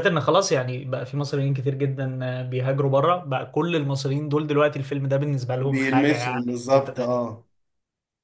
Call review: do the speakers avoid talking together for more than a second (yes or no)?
no